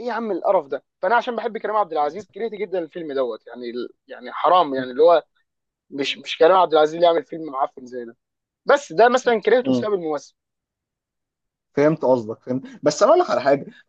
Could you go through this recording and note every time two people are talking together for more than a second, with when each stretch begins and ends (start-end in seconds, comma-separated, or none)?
none